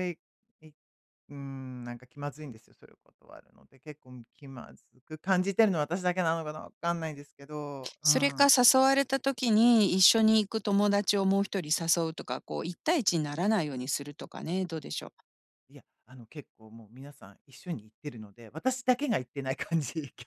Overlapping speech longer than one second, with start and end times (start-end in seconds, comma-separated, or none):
none